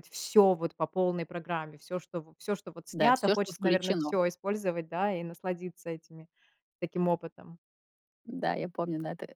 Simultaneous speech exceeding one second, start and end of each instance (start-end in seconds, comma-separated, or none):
2.9-4.2